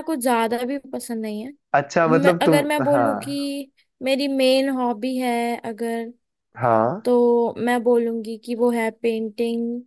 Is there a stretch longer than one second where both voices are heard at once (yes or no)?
yes